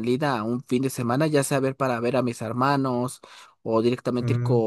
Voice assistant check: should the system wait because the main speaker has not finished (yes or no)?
yes